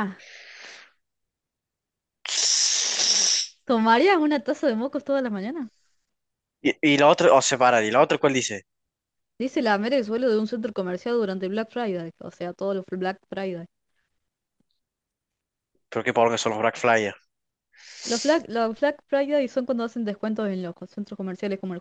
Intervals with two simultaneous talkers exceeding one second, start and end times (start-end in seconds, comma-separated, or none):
none